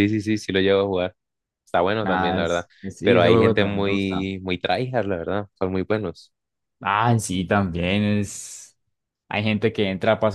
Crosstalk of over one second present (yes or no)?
yes